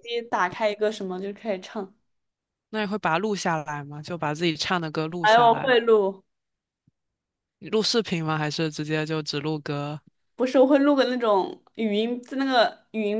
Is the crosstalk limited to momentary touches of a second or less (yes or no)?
yes